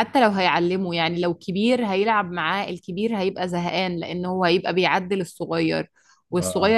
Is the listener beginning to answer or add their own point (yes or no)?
no